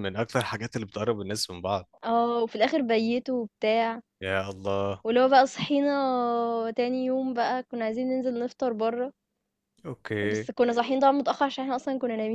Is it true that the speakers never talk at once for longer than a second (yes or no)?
yes